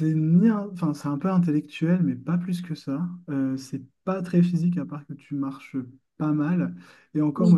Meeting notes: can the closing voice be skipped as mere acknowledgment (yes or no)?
yes